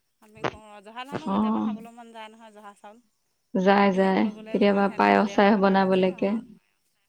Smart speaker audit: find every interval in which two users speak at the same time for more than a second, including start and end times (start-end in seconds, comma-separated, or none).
3.9-6.3